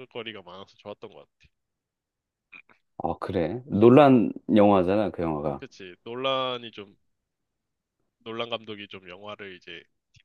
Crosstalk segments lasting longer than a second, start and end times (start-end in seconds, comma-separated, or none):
none